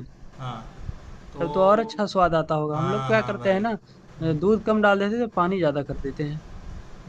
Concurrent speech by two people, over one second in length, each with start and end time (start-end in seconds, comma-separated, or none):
2.7-4.3